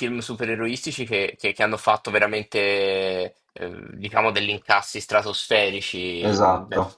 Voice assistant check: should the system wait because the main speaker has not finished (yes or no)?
yes